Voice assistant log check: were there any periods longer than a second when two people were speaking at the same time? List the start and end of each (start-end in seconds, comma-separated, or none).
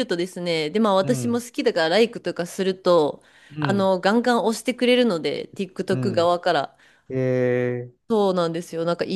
none